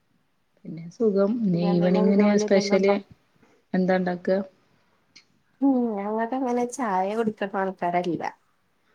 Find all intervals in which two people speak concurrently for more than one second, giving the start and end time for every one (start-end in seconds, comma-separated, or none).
1.5-2.9